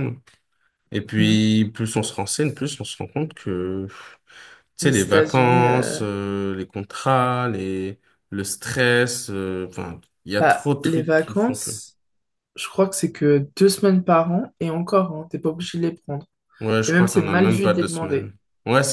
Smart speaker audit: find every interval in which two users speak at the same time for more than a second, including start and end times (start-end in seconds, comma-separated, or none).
4.8-6.0, 10.4-11.7, 16.9-18.3